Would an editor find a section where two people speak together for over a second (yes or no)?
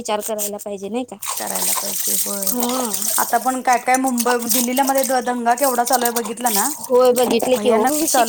no